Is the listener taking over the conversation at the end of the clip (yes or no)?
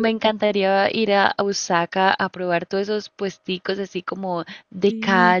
no